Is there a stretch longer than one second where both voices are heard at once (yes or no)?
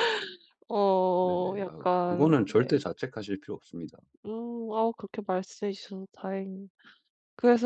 yes